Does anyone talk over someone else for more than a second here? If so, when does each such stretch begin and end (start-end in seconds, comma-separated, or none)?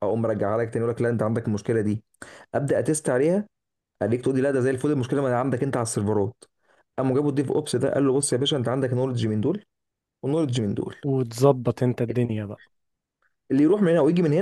none